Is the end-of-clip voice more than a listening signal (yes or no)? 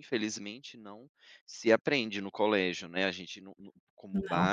no